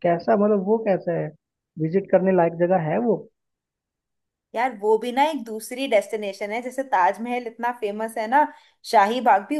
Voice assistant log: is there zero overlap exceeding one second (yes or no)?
yes